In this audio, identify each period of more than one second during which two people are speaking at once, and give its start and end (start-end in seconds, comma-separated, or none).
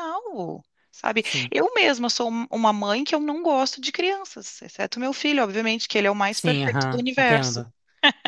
6.3-7.6